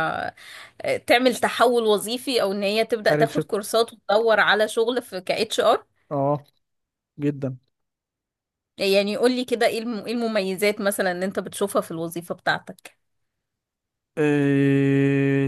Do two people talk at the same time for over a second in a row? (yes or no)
no